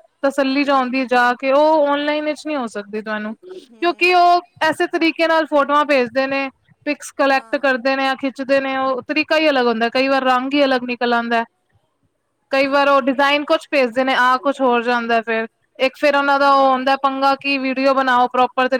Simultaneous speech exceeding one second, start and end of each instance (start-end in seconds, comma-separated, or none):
none